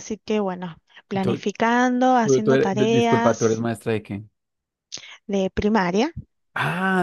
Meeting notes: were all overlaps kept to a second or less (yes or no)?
no